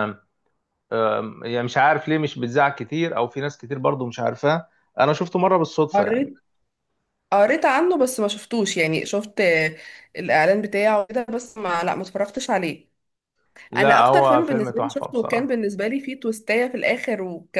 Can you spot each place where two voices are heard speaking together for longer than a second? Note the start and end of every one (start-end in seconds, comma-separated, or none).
13.8-15.6